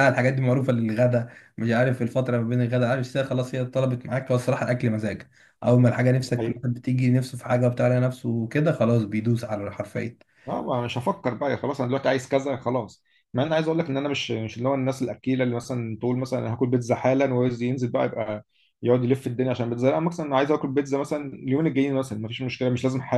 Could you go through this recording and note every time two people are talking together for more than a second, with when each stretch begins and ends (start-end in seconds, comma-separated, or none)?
none